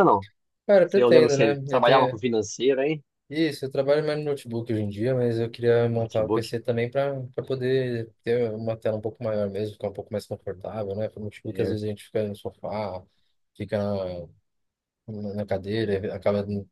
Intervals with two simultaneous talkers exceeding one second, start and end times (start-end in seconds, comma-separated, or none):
0.8-2.2